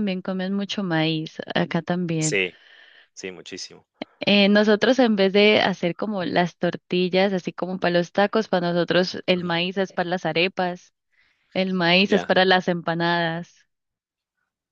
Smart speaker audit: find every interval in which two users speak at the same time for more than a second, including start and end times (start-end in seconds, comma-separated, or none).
none